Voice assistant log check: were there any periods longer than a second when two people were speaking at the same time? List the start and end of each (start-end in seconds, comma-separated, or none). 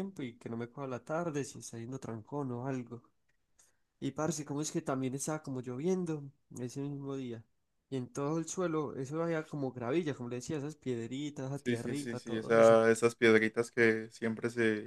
11.5-12.8